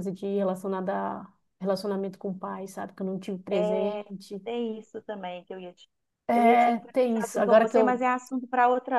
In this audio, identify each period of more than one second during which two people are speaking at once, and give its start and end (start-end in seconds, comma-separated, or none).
6.3-8.0